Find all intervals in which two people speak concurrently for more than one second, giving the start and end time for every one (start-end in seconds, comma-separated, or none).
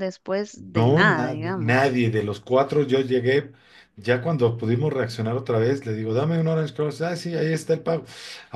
0.8-2.0